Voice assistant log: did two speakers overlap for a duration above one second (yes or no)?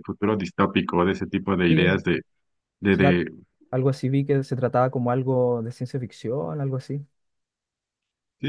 no